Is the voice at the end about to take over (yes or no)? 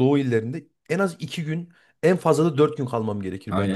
yes